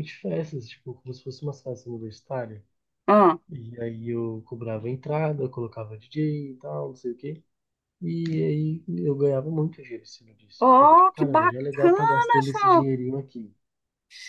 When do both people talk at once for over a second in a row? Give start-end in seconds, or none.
10.6-12.8